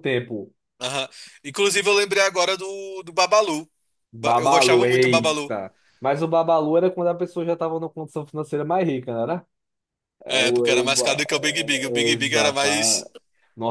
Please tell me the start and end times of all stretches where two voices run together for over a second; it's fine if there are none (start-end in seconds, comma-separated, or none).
4.2-5.6, 10.3-13.1